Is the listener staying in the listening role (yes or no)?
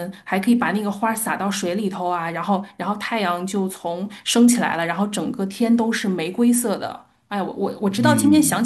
no